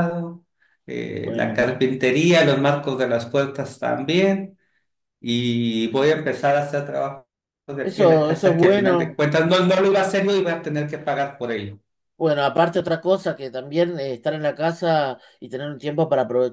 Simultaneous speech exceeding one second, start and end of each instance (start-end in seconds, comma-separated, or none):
7.8-9.2